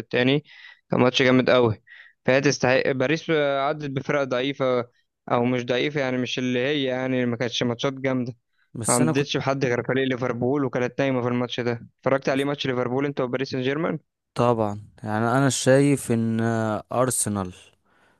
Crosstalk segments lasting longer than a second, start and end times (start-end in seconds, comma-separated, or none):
none